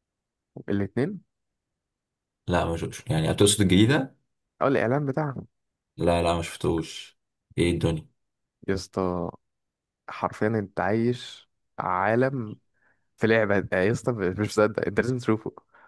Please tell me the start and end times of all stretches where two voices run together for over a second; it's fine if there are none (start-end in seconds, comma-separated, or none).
none